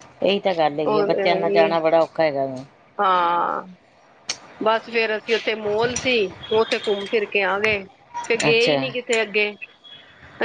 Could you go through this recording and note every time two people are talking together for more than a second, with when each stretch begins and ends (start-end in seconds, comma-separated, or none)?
none